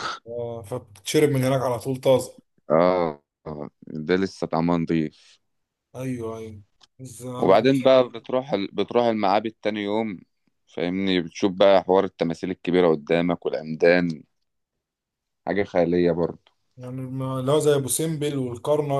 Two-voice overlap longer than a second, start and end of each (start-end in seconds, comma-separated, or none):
none